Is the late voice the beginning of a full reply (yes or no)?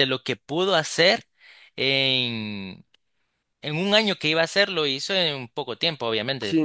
yes